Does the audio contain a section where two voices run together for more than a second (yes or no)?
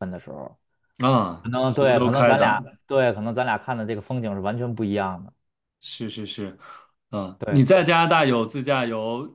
yes